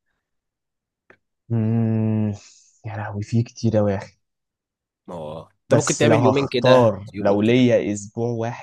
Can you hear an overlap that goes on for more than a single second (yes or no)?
yes